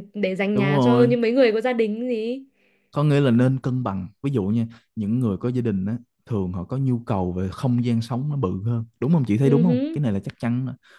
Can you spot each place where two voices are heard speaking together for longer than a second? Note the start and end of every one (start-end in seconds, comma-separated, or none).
none